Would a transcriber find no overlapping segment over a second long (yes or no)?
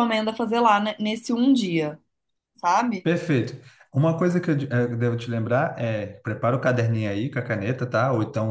yes